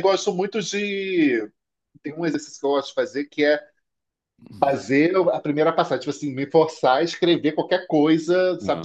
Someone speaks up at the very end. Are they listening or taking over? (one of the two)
listening